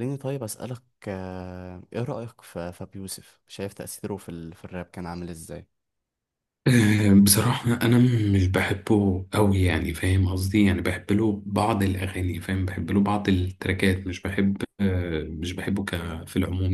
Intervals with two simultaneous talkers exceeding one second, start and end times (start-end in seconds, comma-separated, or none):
none